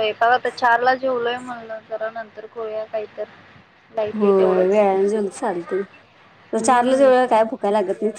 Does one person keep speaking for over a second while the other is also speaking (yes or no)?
no